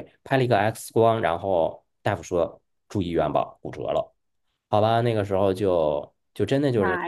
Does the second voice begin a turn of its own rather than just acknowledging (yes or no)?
no